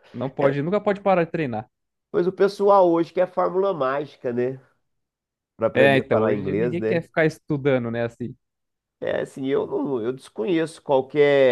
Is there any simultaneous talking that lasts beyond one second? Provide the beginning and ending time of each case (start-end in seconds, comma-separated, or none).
5.7-7.1